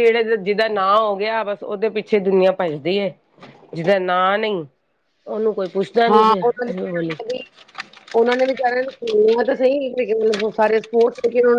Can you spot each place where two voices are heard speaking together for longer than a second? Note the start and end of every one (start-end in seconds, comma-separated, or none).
none